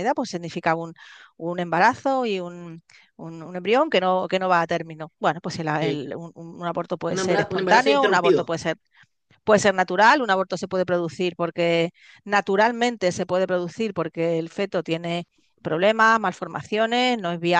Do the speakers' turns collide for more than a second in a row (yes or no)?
yes